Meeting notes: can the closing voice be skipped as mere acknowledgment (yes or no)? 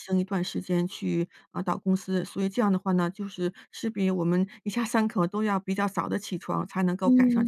no